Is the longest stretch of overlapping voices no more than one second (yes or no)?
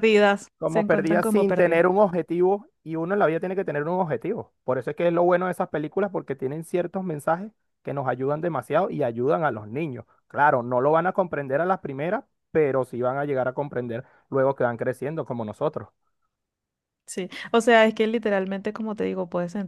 no